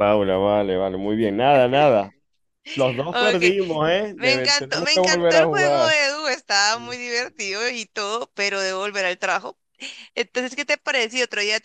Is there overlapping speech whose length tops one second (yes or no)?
yes